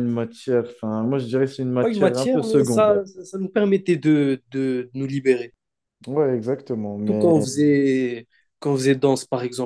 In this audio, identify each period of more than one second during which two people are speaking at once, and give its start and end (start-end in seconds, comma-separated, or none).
1.8-3.0